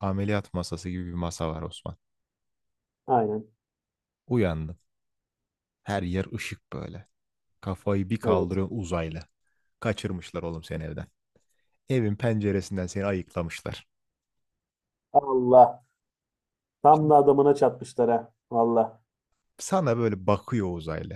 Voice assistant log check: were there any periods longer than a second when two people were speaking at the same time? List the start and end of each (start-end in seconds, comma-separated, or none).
none